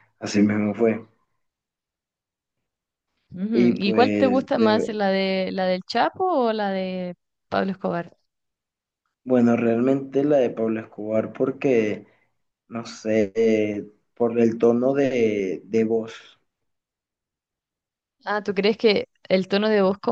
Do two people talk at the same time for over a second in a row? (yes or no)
yes